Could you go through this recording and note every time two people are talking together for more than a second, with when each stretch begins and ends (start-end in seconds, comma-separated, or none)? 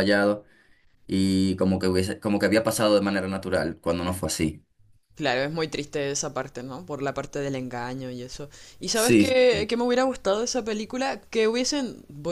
none